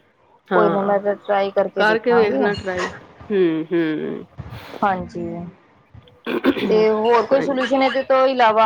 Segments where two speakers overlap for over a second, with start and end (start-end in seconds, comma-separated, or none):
none